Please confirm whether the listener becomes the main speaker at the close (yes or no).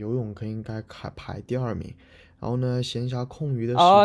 yes